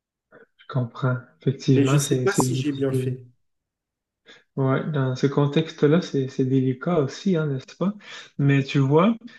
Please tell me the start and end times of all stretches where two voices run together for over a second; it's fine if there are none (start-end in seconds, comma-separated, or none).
1.7-3.2